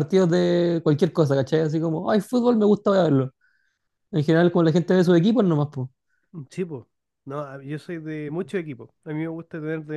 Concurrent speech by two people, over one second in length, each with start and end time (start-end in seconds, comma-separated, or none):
none